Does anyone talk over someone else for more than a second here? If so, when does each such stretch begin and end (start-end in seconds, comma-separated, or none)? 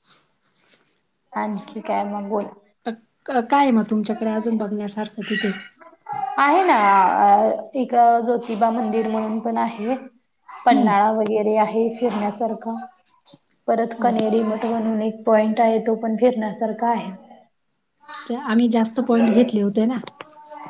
none